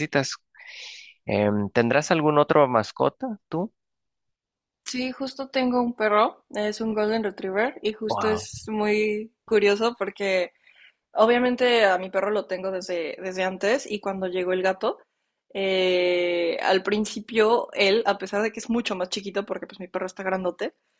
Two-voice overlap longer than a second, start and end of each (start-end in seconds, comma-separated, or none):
none